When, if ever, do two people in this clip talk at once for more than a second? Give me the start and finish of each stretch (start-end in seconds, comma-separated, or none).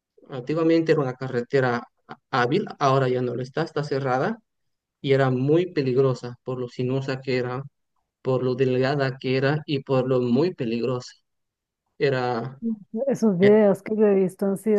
none